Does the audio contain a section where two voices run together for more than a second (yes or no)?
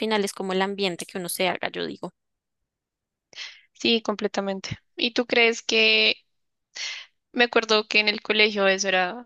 no